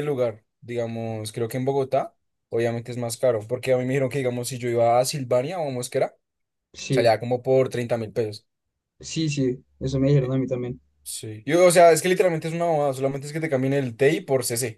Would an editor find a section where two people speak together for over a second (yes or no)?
no